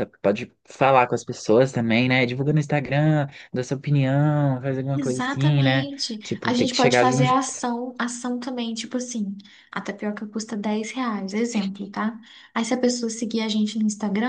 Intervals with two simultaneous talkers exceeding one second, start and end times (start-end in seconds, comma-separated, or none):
4.9-7.2